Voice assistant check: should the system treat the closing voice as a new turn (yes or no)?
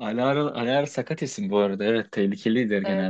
yes